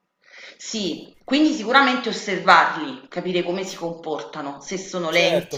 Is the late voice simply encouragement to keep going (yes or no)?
no